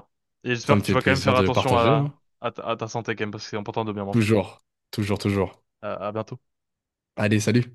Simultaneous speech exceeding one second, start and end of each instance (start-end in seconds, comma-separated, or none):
0.6-2.1